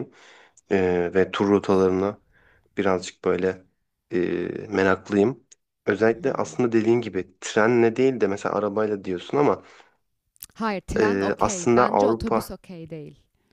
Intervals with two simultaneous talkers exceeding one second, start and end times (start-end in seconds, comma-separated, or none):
11.0-12.5